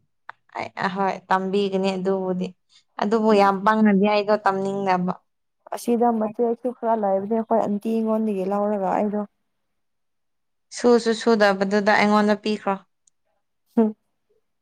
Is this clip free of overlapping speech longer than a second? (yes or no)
yes